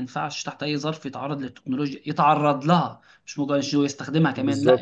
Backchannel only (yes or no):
no